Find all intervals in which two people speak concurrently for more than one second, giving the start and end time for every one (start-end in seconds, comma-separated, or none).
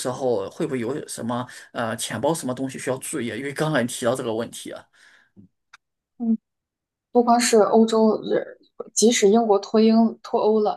none